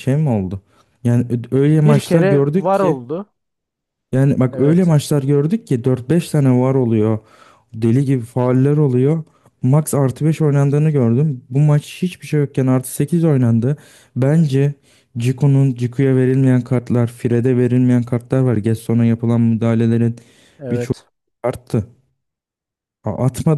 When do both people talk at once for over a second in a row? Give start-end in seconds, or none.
1.7-3.0